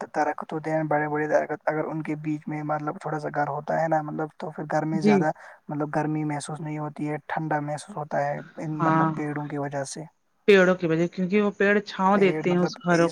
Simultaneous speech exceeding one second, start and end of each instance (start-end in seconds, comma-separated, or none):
none